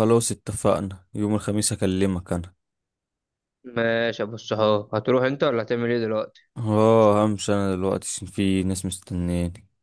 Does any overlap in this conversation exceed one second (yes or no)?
no